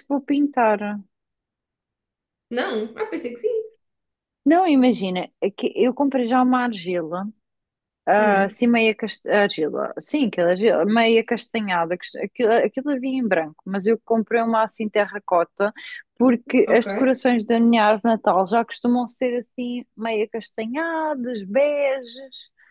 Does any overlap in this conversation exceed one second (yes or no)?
no